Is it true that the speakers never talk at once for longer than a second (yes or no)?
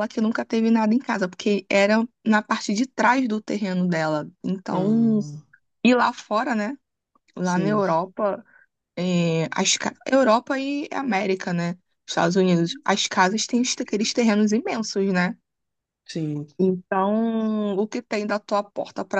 yes